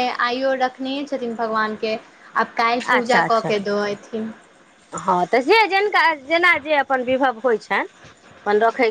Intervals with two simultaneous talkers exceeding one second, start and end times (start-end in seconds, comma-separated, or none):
none